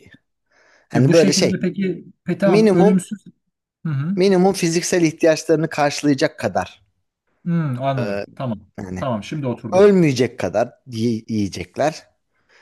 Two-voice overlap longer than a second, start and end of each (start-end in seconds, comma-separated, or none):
none